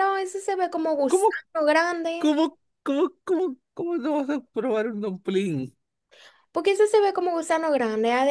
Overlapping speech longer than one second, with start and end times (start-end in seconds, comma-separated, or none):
none